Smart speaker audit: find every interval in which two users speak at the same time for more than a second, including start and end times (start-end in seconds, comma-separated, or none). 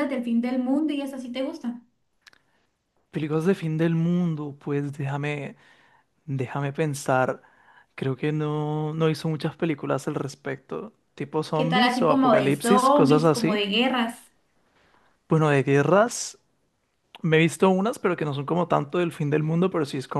11.5-13.7